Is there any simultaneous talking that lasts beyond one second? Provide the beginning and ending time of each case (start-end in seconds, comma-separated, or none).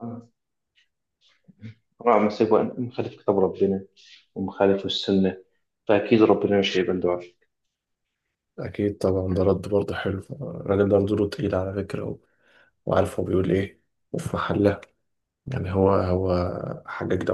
none